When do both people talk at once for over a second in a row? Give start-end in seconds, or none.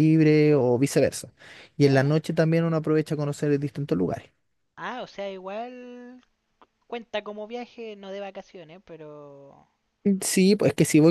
none